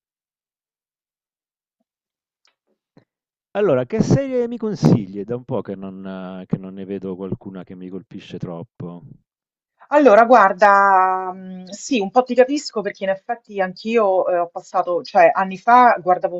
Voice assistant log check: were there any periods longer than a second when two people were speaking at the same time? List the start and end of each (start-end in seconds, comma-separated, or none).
none